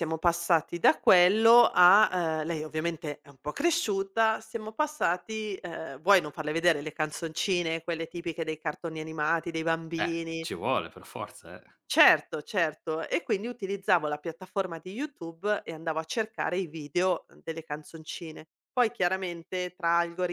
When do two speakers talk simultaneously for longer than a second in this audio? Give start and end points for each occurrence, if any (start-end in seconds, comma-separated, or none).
none